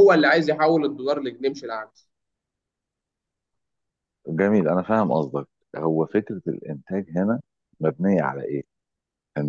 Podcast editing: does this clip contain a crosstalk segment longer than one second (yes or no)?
no